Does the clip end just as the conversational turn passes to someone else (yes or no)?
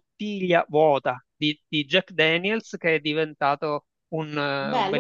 yes